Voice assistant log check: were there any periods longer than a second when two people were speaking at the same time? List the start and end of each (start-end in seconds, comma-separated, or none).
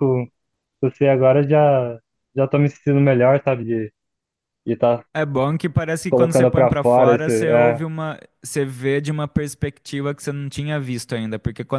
6.1-7.8